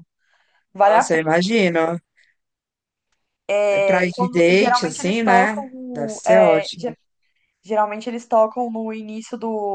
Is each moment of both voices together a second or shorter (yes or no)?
no